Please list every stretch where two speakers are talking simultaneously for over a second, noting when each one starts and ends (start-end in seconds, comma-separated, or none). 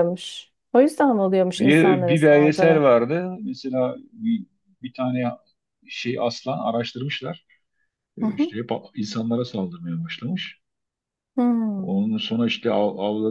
1.6-2.9